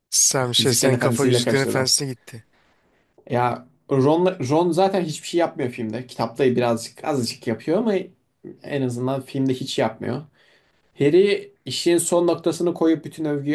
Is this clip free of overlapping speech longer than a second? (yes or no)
no